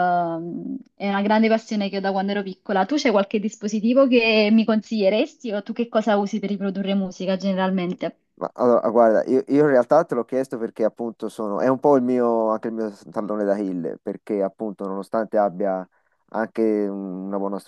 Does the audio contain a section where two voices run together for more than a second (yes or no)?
no